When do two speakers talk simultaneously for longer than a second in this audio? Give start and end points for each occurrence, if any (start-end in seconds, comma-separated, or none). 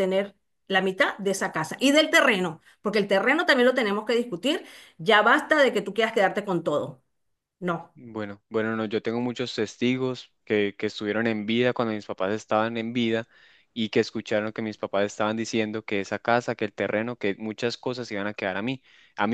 none